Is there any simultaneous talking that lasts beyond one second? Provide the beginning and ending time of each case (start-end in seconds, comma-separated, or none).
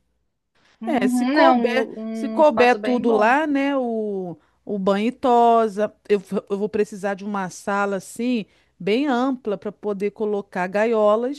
0.8-3.4